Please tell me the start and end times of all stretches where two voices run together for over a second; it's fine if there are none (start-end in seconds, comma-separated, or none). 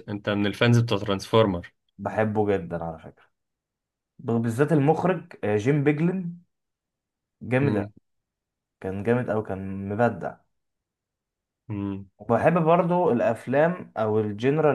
none